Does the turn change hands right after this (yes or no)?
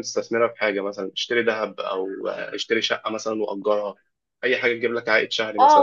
yes